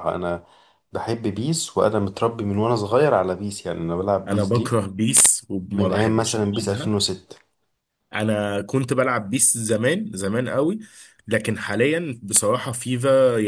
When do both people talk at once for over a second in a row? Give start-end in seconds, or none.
5.7-6.9